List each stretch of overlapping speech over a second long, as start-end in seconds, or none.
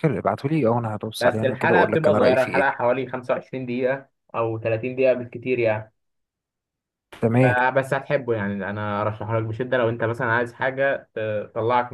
1.2-2.7